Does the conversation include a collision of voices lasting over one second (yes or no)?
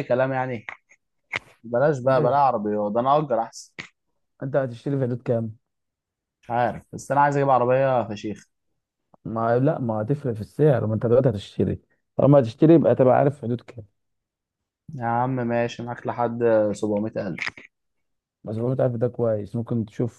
no